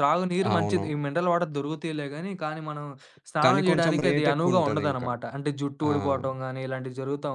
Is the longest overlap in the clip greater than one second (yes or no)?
yes